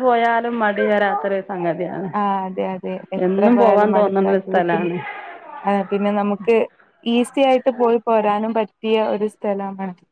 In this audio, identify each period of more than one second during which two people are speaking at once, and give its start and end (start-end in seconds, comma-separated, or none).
3.2-4.9